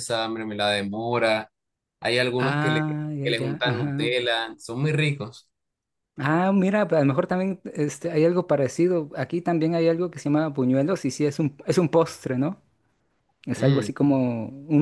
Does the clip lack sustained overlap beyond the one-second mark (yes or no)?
no